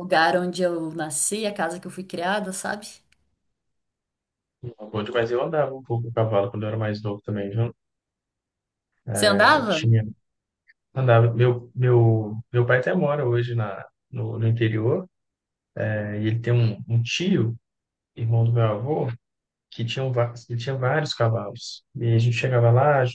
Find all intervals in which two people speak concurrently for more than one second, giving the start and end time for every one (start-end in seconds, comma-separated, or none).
none